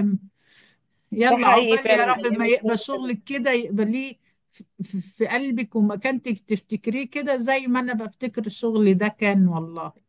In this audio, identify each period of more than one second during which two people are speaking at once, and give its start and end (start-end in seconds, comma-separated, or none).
1.3-3.1